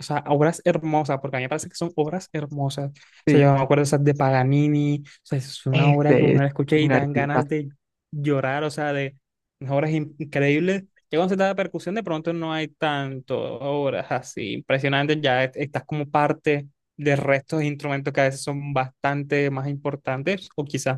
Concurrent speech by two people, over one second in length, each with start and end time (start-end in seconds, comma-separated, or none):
5.7-7.5